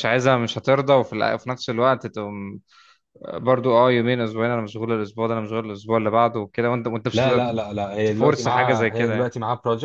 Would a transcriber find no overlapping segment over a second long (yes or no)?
no